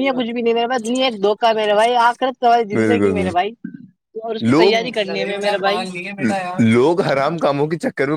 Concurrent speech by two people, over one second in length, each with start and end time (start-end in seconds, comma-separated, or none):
1.7-3.4